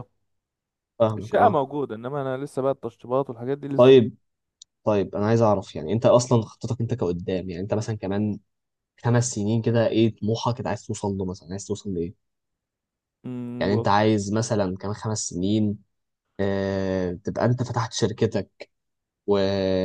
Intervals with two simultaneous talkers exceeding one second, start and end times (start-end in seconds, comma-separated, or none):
none